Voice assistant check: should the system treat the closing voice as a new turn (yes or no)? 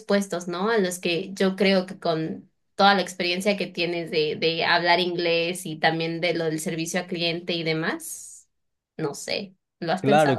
yes